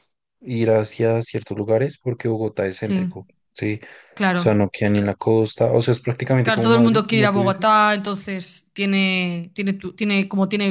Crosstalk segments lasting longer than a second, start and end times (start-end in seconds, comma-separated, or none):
6.4-7.8